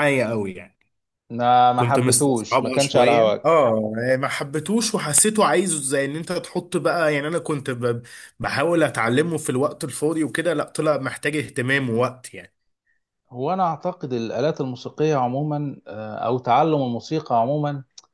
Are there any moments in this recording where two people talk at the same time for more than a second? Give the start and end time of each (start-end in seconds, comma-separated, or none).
1.8-3.5